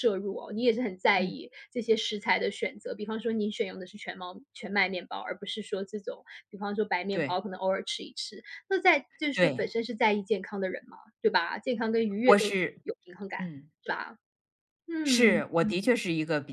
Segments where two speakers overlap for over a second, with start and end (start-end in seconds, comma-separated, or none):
none